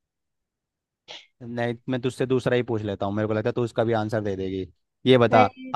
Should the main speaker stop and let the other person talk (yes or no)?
no